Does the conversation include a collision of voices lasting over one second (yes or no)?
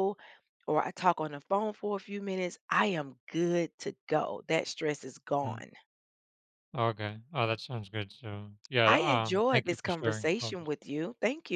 yes